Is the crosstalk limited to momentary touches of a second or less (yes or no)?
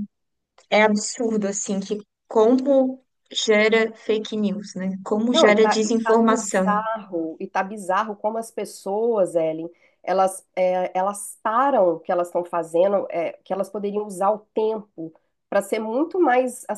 no